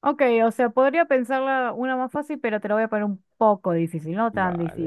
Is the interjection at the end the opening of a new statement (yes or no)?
yes